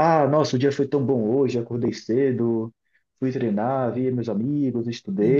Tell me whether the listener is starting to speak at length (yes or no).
no